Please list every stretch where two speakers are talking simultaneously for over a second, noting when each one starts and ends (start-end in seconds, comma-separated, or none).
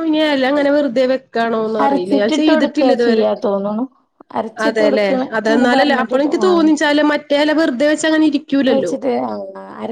1.8-3.2, 4.7-6.7